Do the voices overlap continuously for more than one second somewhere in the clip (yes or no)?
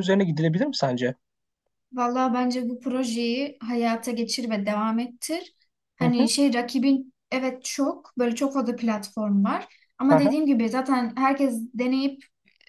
no